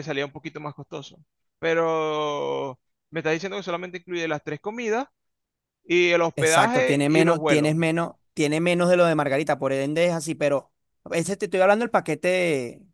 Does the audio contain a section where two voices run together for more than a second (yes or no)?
yes